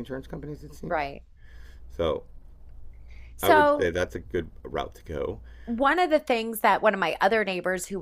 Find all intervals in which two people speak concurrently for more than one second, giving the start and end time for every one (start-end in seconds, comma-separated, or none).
none